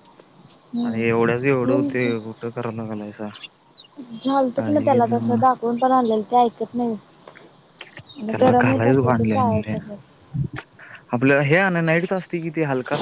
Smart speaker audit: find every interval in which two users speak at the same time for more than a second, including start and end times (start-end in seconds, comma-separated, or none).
8.4-9.7